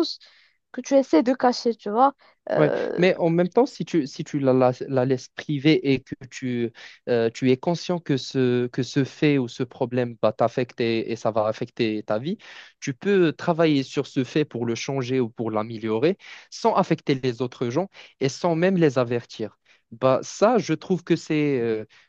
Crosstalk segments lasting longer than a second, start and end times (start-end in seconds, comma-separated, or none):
none